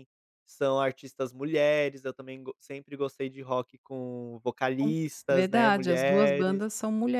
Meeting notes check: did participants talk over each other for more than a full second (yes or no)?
yes